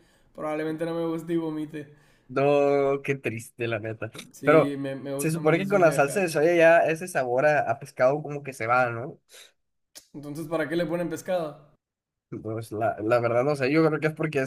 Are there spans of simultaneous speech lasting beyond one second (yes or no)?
yes